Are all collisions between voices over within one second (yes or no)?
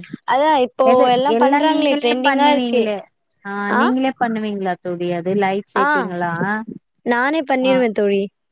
no